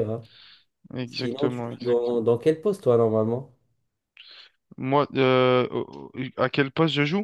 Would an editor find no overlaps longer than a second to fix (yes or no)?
no